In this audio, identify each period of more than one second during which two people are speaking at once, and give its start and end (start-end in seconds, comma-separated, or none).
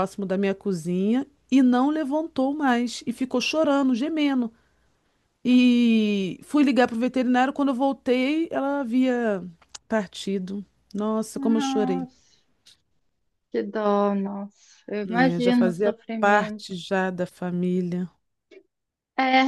15.1-16.8